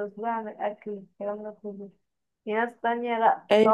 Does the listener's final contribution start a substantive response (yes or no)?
no